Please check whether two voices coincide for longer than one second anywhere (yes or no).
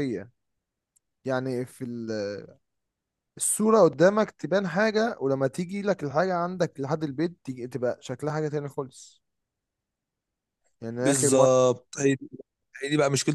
no